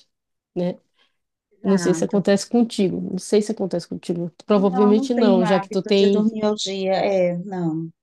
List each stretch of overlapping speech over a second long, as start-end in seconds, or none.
4.5-6.3